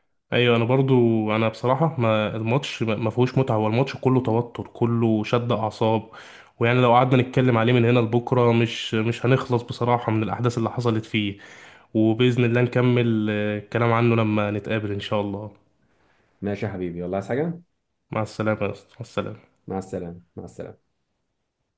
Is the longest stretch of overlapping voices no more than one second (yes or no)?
yes